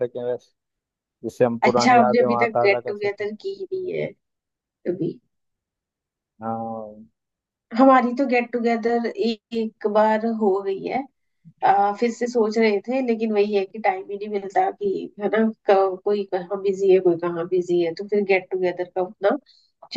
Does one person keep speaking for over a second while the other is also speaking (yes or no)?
yes